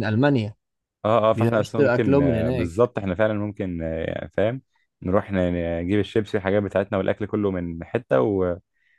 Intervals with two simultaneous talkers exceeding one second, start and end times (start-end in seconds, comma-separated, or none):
1.4-2.7